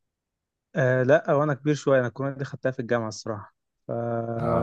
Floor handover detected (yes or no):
yes